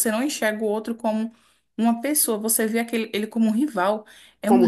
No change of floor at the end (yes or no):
yes